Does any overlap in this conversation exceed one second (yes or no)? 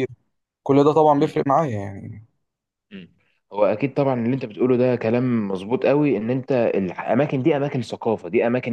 no